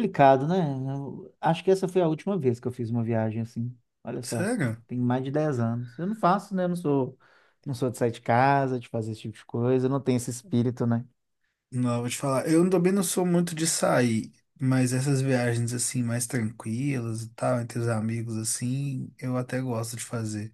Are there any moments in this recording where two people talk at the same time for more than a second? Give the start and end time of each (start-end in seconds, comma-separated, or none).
none